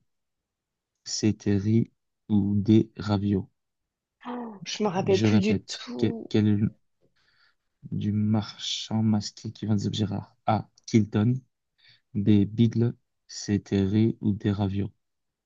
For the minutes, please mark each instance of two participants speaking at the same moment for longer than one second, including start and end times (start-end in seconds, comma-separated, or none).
5.1-6.3